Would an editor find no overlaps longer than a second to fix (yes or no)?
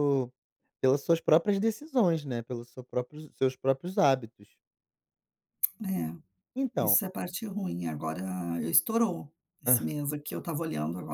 yes